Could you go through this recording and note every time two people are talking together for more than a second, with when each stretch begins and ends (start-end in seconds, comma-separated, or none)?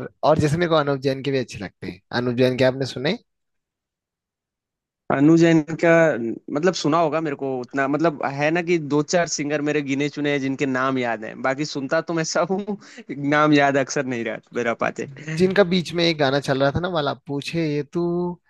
none